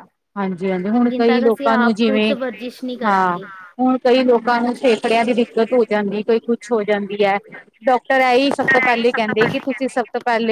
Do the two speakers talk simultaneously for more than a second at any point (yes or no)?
yes